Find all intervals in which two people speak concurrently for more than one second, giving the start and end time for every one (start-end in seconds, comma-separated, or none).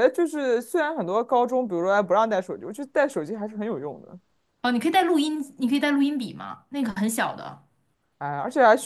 none